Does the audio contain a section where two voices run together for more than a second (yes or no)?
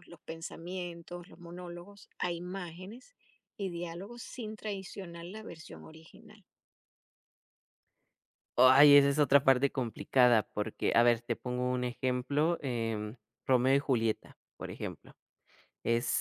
no